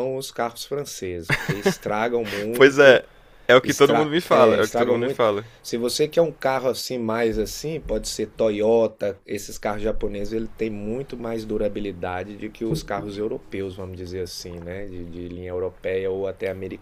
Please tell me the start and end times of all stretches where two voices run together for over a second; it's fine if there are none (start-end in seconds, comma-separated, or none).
3.6-5.5